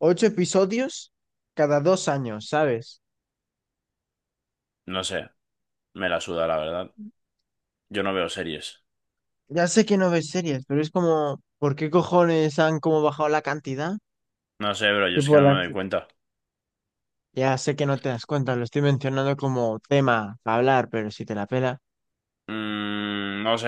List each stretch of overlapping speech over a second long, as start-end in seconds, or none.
none